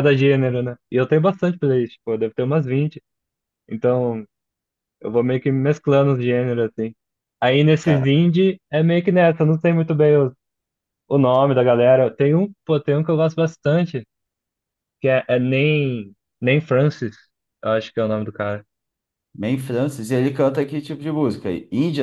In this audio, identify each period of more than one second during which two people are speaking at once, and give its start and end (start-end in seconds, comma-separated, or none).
none